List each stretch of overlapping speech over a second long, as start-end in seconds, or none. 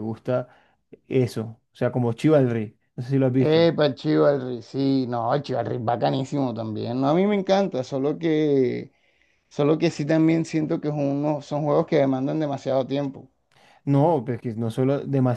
none